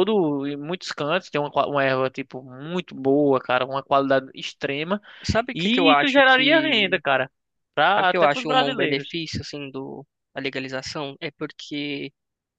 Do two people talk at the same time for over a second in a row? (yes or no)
yes